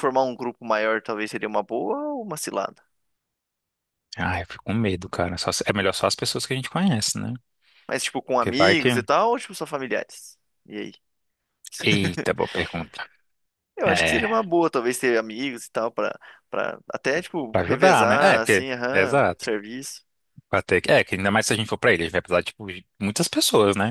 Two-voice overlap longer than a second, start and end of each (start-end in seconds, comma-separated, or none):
17.5-19.5